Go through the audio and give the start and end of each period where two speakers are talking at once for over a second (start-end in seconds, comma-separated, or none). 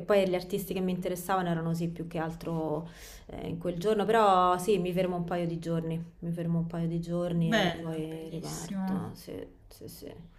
7.3-9.1